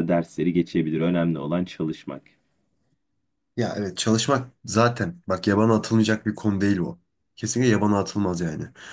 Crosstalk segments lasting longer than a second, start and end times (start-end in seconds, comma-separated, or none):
none